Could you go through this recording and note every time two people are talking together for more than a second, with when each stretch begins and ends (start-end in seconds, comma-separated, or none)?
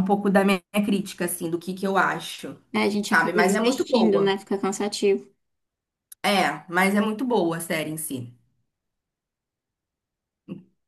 3.0-4.4